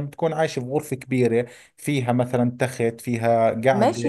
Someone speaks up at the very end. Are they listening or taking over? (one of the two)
taking over